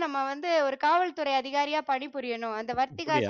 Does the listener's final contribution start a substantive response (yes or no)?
yes